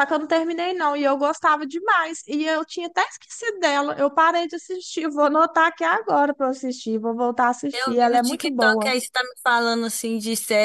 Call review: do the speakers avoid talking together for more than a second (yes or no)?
no